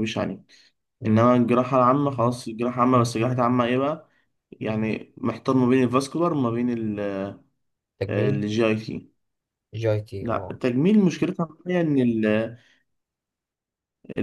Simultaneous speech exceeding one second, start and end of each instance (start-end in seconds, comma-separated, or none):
none